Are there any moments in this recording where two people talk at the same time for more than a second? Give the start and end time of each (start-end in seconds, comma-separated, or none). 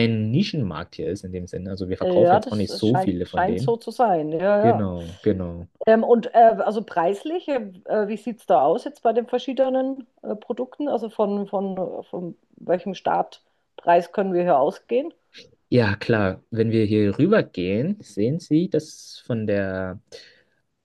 2.0-3.8